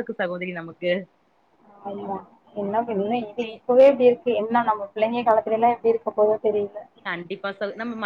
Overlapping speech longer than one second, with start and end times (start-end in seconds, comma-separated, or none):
none